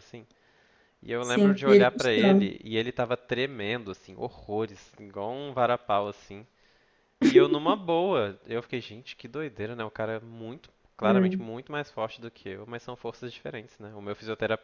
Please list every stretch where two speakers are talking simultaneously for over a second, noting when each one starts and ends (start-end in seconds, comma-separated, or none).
1.2-2.5